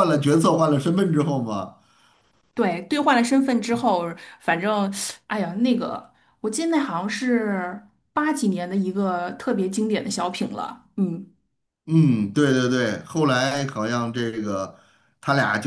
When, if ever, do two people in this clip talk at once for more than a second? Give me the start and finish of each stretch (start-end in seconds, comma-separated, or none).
none